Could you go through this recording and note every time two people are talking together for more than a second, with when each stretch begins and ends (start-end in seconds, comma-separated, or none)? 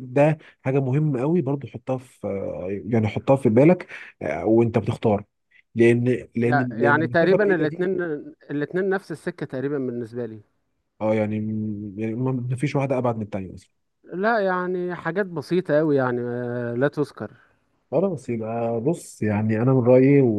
6.5-7.9